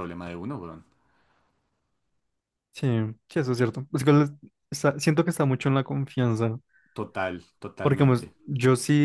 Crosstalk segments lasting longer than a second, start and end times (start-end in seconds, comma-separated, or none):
none